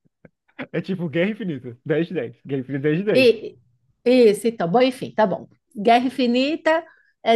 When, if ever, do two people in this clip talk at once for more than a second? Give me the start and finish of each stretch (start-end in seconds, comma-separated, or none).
none